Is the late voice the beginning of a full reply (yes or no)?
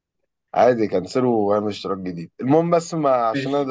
no